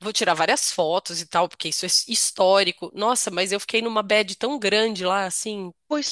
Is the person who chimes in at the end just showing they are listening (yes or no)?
no